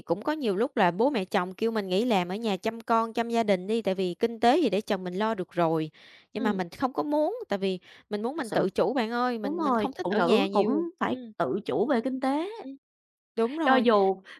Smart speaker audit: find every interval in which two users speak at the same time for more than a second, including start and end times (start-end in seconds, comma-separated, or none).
9.4-11.3